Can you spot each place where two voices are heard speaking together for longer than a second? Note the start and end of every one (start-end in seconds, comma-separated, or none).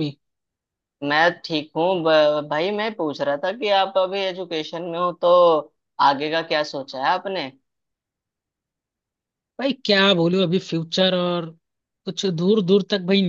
none